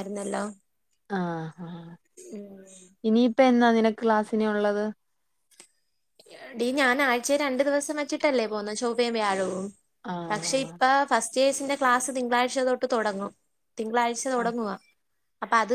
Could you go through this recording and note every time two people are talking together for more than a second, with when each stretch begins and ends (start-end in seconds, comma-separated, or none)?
none